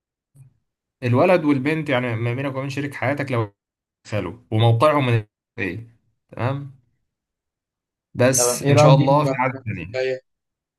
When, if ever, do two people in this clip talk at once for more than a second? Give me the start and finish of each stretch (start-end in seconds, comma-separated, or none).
8.4-10.1